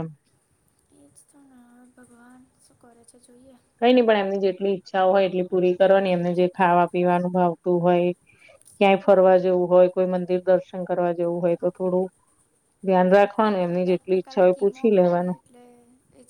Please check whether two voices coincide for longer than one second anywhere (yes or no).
yes